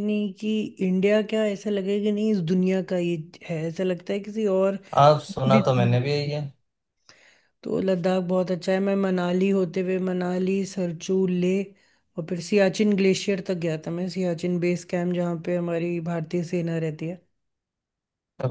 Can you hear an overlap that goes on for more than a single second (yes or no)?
yes